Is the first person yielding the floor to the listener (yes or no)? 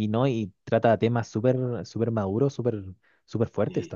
yes